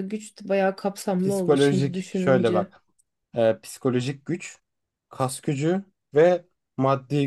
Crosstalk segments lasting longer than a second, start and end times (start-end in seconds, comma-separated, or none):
1.2-2.7